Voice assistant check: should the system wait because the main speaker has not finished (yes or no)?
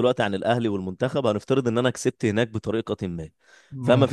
yes